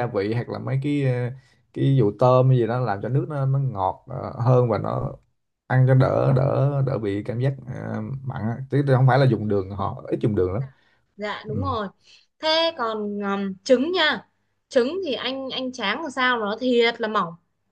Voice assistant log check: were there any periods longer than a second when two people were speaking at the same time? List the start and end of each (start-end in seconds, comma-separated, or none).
none